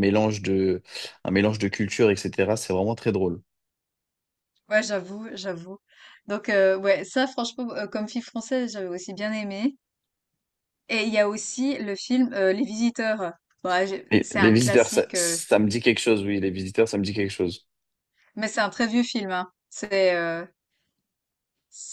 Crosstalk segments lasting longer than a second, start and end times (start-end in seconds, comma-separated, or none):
14.1-15.4